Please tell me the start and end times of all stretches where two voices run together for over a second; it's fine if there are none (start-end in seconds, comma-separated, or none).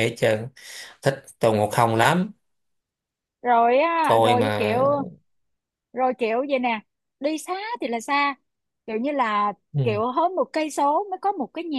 none